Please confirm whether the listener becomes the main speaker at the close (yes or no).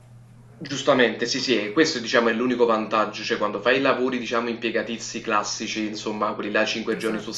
no